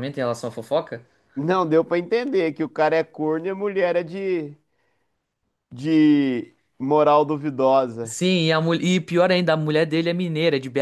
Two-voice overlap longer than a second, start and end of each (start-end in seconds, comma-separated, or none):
none